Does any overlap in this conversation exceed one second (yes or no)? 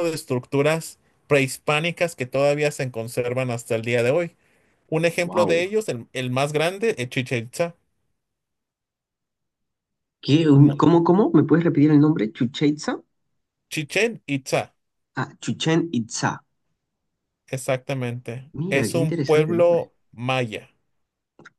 yes